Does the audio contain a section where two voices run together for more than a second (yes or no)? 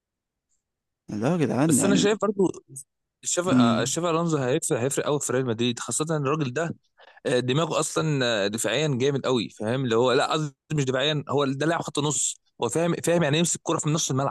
no